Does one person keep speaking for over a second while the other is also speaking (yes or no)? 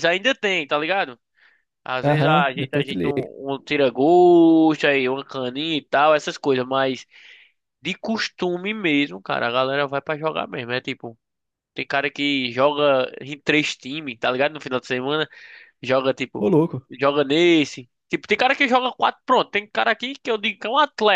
yes